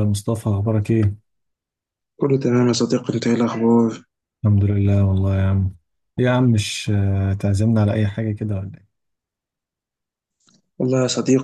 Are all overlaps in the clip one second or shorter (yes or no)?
yes